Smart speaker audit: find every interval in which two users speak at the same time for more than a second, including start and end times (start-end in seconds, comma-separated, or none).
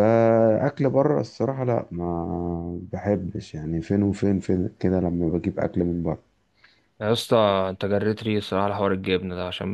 none